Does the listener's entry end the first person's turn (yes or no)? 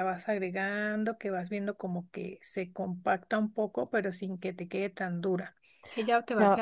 yes